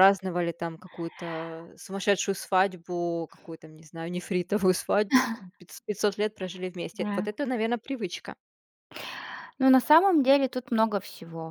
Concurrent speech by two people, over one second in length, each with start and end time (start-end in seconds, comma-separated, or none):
none